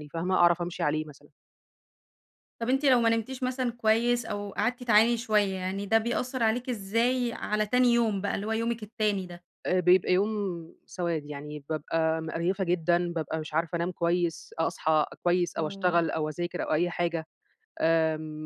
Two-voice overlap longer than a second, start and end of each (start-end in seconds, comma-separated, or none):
none